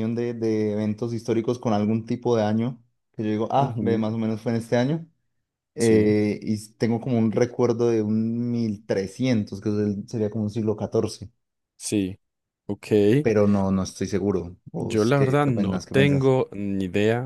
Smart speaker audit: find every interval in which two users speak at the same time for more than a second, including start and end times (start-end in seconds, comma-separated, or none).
14.8-16.3